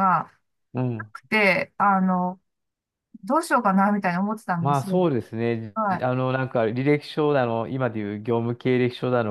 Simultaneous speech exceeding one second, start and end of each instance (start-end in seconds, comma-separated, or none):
none